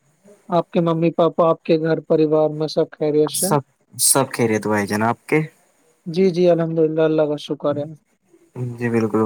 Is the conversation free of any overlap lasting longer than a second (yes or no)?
yes